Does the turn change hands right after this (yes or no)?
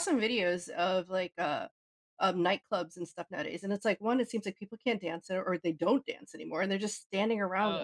yes